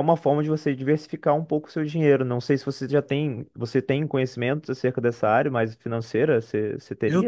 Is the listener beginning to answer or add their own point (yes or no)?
yes